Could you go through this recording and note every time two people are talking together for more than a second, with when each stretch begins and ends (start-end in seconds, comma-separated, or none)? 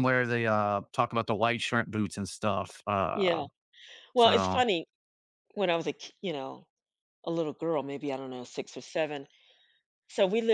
none